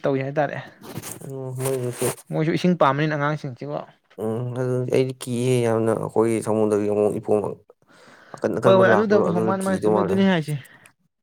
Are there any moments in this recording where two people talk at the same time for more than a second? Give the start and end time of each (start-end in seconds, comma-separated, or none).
8.7-10.2